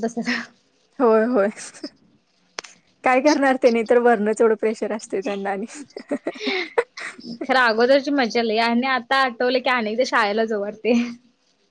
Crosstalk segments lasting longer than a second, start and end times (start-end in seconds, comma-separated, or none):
none